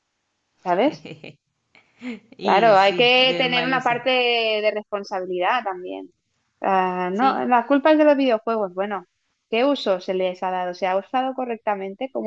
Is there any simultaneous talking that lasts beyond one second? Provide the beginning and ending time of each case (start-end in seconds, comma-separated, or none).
2.4-4.0